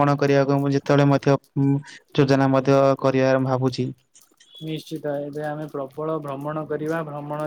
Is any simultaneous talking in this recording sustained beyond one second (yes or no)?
no